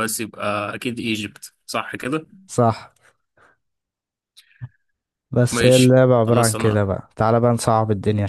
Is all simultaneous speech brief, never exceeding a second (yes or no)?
no